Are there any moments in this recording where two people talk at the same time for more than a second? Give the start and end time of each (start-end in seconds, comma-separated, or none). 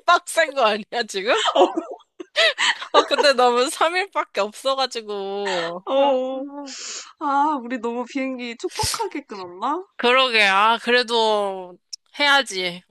none